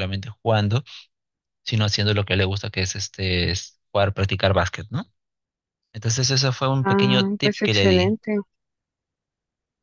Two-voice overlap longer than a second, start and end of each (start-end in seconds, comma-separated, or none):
6.8-8.2